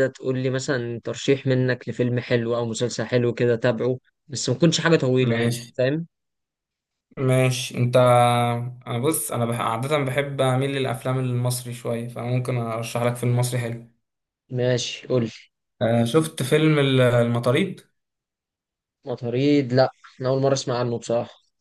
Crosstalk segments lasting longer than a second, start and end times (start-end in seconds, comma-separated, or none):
none